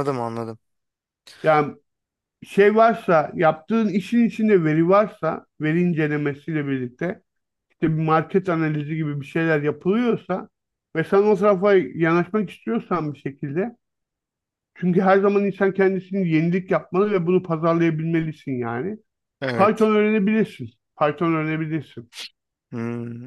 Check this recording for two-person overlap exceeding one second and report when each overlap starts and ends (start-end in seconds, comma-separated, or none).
none